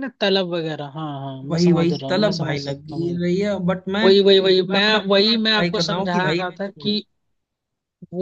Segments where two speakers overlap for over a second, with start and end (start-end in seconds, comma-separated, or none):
1.5-3.2, 4.0-6.9